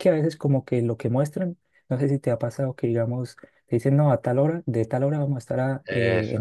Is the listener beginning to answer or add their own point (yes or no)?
no